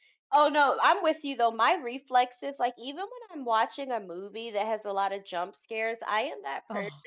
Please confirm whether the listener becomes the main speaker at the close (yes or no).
no